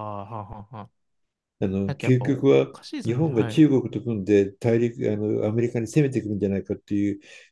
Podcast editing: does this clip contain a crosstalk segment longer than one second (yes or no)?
yes